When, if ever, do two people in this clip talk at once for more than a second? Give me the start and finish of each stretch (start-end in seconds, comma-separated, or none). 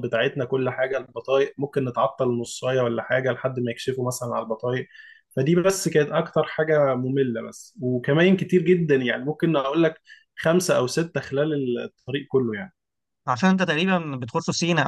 none